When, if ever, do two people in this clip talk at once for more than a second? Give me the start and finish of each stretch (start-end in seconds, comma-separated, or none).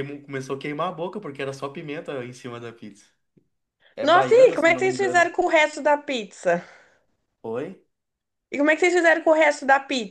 4.0-5.3